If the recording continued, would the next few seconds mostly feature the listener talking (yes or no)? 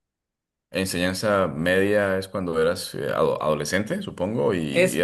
yes